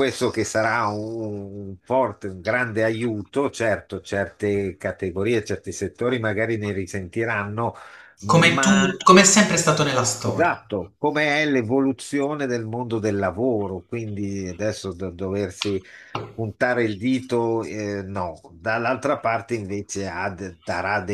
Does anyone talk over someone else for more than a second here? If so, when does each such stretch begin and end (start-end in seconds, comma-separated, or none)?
none